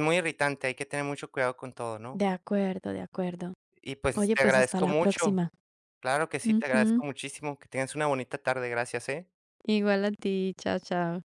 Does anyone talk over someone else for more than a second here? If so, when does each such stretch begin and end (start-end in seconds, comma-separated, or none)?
4.2-5.4